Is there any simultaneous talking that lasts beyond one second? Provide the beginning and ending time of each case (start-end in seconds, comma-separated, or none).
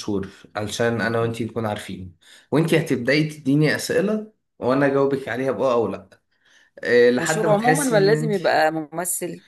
7.2-8.4